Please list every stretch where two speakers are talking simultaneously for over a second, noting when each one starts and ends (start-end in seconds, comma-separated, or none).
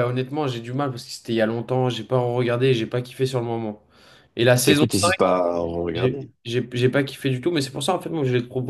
none